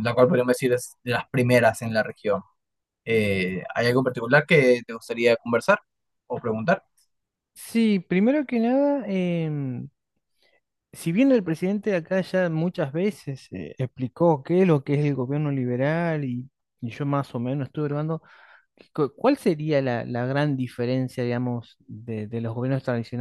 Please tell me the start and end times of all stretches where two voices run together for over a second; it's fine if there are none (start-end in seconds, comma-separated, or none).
none